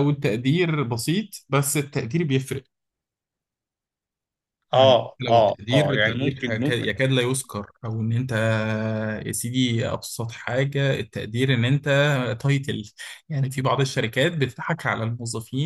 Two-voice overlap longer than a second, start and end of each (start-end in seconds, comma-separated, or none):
4.7-6.9